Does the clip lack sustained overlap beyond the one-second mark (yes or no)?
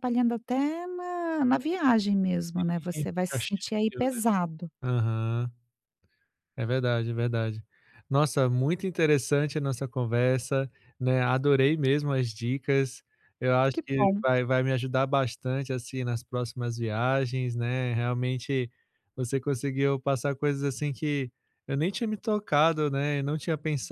no